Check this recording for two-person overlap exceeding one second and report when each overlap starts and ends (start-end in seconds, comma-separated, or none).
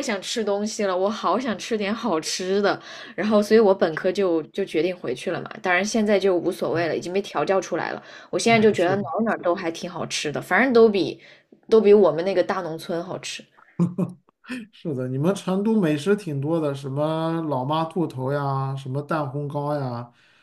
none